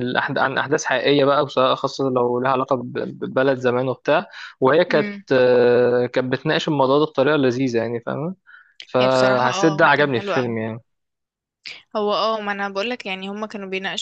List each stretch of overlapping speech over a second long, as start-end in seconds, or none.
9.0-10.6